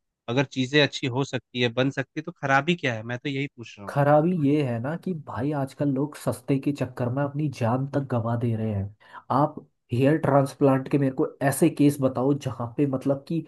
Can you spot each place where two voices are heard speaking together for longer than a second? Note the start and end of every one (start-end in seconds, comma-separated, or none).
none